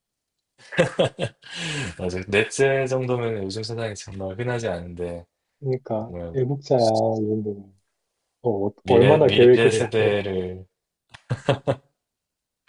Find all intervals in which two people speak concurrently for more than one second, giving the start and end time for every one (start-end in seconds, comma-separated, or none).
8.8-10.1